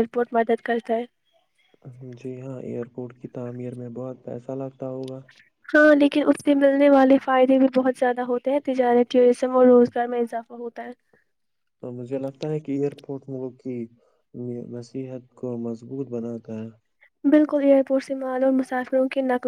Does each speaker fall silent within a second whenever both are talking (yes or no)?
yes